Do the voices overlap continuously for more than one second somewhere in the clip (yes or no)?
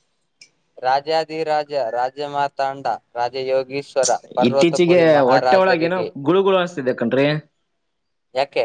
yes